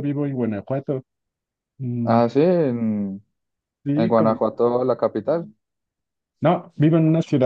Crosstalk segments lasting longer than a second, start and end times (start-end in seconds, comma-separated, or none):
none